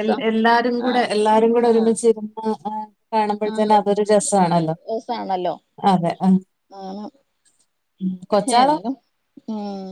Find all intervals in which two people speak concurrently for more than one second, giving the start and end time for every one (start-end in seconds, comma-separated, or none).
none